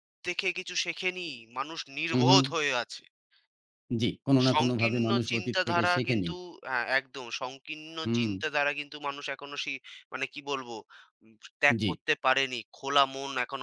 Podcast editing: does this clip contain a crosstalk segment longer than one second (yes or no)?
yes